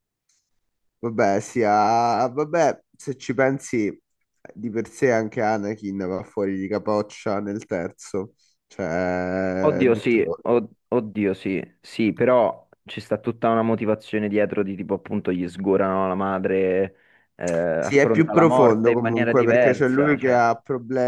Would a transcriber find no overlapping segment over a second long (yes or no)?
no